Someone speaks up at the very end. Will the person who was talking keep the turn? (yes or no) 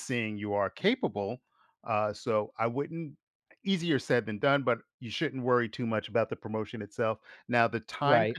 yes